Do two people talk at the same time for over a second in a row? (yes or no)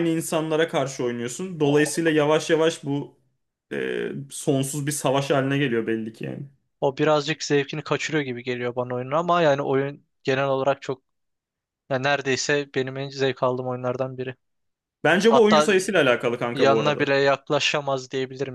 no